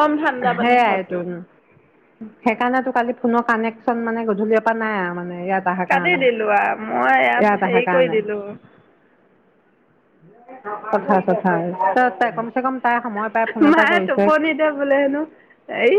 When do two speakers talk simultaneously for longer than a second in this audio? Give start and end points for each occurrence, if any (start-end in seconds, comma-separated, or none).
5.9-8.1